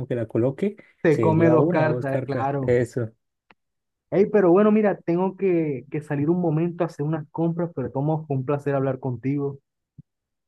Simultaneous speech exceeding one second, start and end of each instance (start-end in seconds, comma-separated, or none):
1.0-2.7